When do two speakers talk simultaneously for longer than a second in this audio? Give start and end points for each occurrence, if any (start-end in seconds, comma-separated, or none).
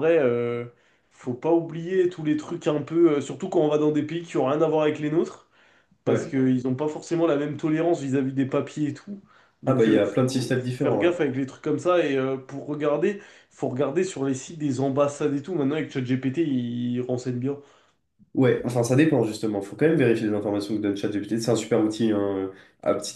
9.6-11.1